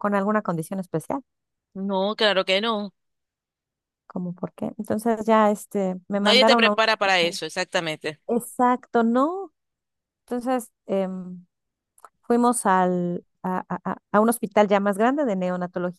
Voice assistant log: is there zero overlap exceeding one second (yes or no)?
no